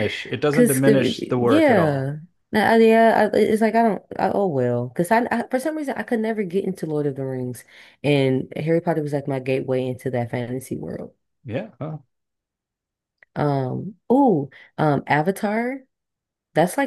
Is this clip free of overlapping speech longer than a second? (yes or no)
no